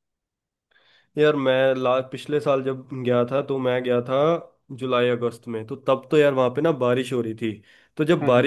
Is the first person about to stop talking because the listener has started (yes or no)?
no